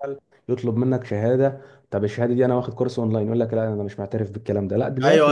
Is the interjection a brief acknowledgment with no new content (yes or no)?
no